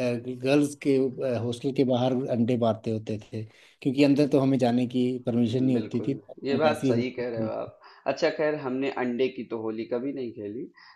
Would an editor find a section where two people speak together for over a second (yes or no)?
yes